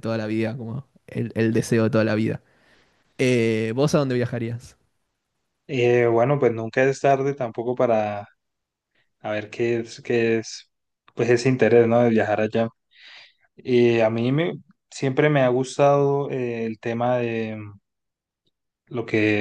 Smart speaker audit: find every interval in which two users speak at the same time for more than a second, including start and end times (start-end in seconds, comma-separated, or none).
none